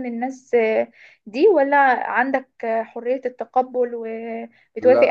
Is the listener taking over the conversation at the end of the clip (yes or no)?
yes